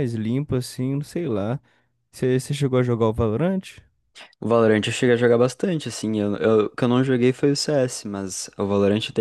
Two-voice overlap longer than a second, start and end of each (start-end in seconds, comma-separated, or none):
none